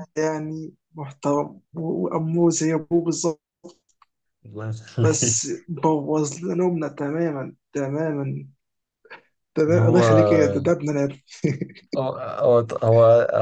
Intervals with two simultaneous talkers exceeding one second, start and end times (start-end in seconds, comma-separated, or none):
none